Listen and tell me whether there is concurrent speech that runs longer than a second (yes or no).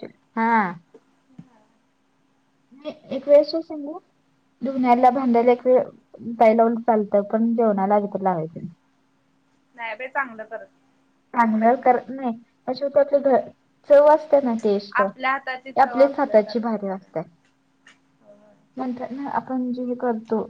yes